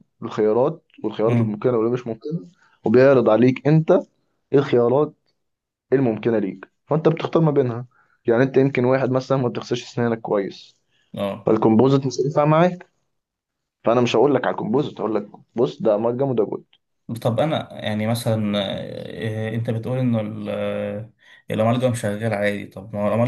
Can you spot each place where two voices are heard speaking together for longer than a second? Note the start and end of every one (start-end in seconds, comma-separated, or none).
none